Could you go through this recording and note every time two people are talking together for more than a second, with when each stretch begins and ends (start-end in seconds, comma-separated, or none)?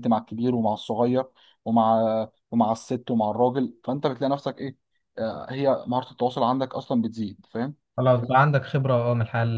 none